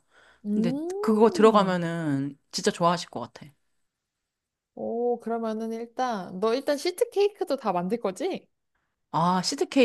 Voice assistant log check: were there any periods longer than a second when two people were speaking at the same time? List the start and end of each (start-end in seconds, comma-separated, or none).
0.5-1.8